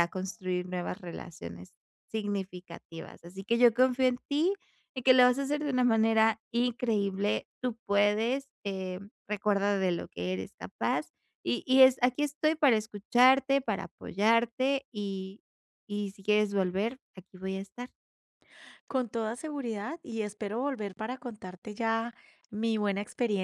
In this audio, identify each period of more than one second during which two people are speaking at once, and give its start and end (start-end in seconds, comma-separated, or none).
none